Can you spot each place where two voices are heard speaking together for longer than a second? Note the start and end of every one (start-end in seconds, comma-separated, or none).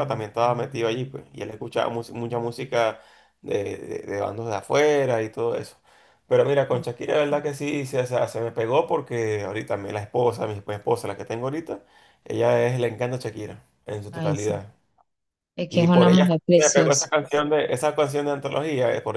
15.7-17.1